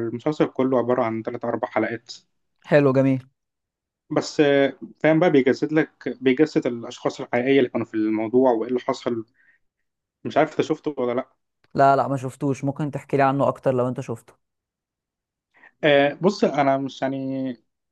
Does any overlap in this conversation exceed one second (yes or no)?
no